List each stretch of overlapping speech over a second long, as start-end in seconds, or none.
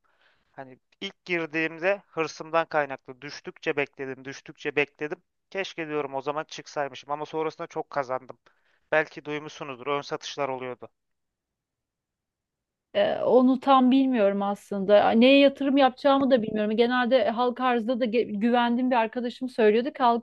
none